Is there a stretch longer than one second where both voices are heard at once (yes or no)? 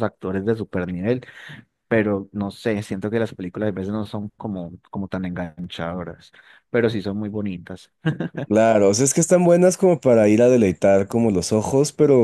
no